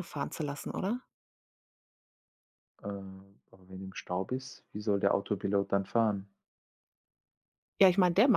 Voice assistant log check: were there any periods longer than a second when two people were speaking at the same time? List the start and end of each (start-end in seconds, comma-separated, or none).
none